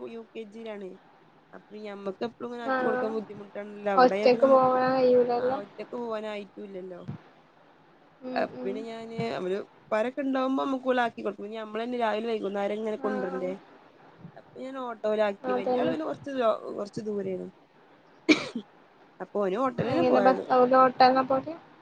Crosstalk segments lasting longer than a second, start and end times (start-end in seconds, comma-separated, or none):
none